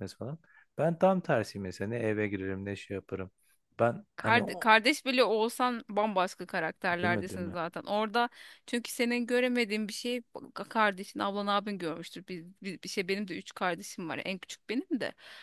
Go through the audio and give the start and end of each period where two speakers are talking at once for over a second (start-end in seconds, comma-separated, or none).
none